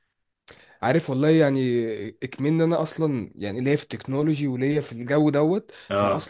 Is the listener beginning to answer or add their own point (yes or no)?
no